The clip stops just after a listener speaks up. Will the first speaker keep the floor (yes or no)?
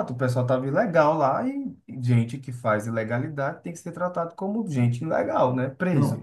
no